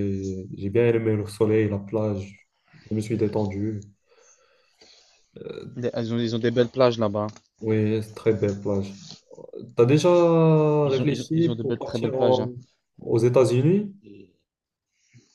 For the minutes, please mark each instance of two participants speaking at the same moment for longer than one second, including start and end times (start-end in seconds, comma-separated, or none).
10.8-12.5